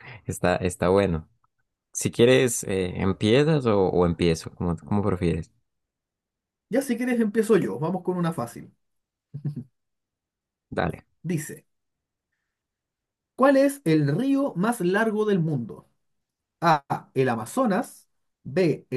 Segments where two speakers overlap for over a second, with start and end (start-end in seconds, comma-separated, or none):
none